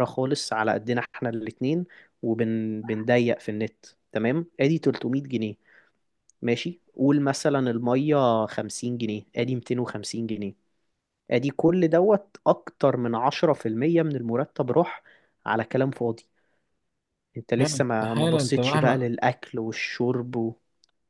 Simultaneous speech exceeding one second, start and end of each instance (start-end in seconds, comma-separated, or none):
17.6-19.1